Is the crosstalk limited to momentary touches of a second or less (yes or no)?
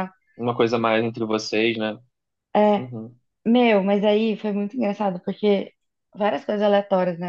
yes